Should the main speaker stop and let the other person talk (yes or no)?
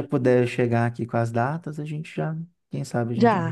yes